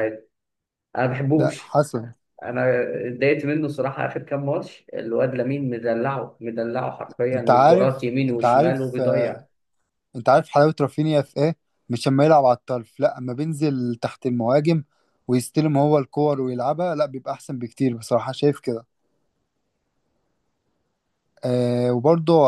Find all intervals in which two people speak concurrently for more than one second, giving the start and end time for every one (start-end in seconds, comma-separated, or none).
7.3-9.4